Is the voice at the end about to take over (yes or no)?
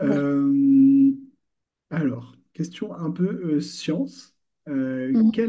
no